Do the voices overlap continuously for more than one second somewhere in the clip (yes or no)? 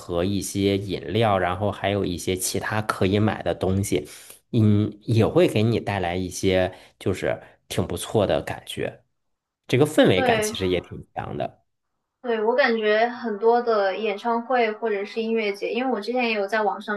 no